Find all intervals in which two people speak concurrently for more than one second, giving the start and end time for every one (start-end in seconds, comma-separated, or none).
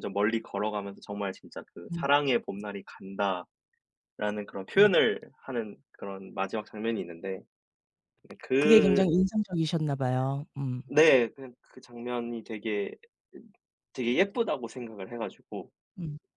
none